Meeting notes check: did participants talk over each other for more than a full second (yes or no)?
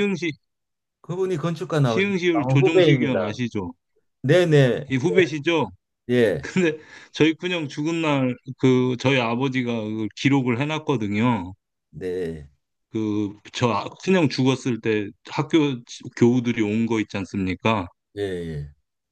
yes